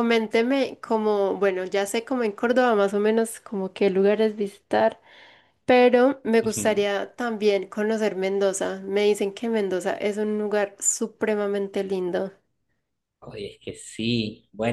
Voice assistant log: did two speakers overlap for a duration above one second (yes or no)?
no